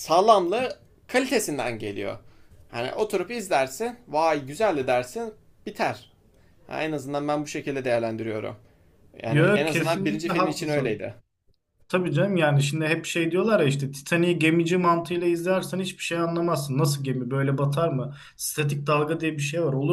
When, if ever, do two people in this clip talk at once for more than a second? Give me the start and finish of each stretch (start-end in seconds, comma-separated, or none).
9.3-11.0